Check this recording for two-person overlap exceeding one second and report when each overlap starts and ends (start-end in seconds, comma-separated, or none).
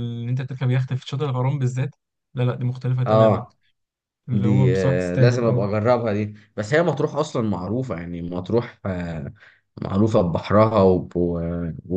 4.3-5.7